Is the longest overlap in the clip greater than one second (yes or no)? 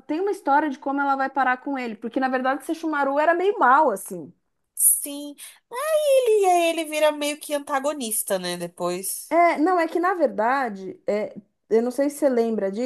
no